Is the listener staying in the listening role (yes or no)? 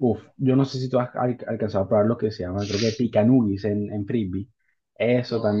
yes